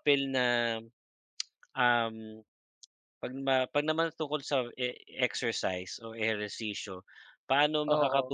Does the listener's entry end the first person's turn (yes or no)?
no